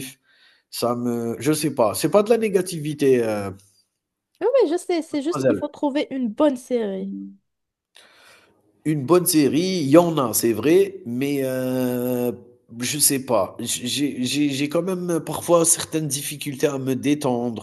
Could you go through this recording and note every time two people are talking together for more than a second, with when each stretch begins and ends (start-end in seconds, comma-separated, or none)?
none